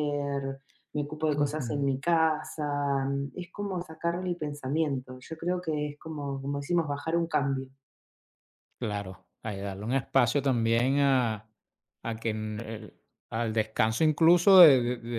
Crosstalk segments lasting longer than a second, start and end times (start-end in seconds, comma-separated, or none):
none